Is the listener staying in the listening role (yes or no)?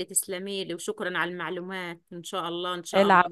no